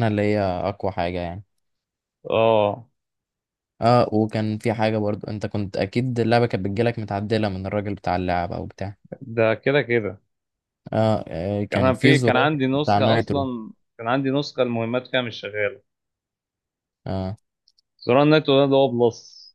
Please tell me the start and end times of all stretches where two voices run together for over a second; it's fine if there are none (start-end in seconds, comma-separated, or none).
11.7-13.5